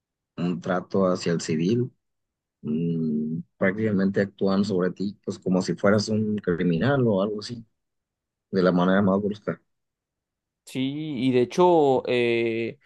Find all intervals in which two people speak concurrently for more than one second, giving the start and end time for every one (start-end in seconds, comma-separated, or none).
none